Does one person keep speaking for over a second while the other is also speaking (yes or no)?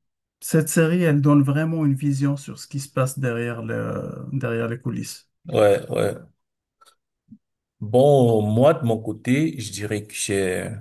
no